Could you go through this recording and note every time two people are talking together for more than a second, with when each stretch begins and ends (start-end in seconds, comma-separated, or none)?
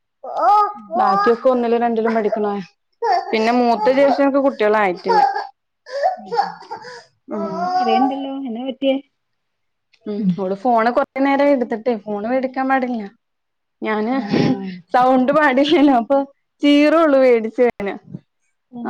none